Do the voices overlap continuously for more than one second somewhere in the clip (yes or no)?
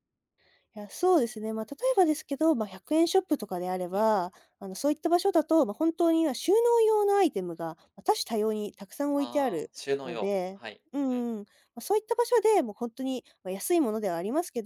yes